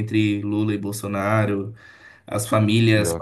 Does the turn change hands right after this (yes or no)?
no